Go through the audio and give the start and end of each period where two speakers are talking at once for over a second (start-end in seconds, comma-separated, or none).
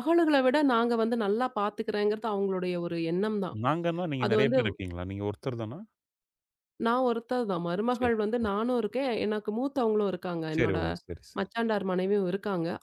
none